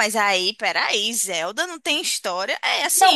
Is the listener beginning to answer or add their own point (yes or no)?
yes